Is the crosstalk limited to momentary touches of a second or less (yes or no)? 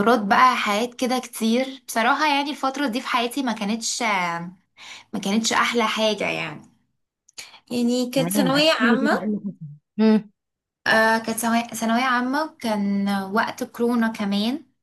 no